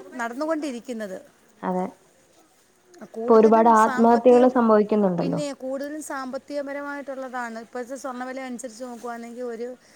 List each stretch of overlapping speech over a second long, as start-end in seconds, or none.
3.2-4.5